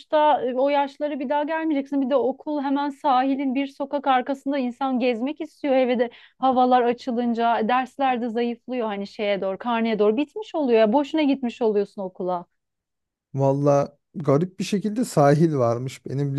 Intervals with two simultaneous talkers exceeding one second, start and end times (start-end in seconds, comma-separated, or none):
none